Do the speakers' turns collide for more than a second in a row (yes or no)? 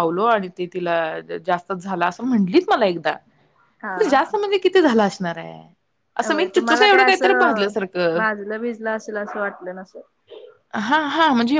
no